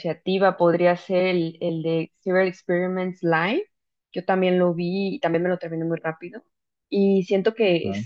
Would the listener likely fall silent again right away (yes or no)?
yes